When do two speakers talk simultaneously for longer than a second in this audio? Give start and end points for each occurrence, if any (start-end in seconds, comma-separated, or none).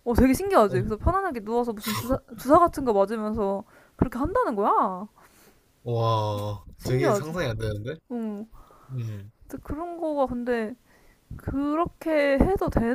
none